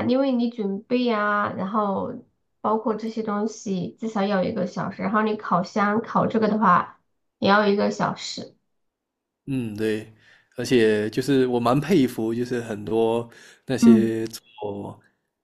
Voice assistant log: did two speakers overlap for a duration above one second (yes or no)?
no